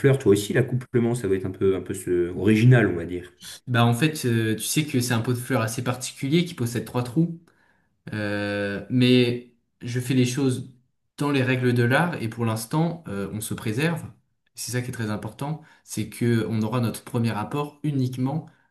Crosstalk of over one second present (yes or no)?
no